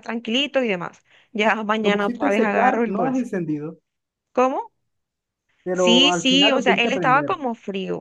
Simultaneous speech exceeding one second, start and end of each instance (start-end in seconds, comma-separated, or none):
1.8-3.3, 5.7-7.4